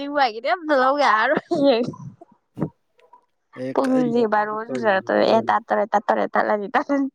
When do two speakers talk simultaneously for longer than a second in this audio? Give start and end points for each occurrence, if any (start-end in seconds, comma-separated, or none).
3.7-5.4